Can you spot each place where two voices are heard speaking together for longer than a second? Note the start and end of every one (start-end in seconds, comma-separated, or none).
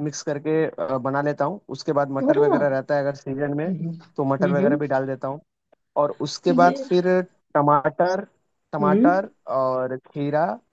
none